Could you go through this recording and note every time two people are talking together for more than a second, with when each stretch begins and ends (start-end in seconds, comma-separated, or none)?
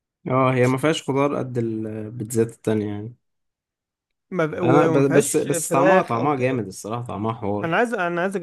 4.6-6.6